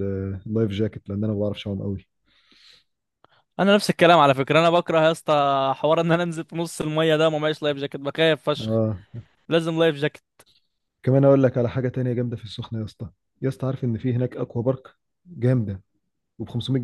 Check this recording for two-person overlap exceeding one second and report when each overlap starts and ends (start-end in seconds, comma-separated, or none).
none